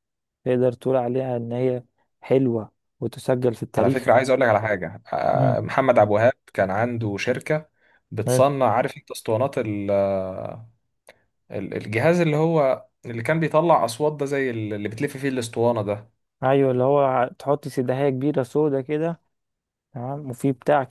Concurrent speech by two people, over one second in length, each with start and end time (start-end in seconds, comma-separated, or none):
none